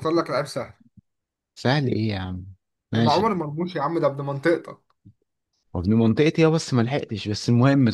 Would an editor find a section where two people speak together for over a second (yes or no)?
no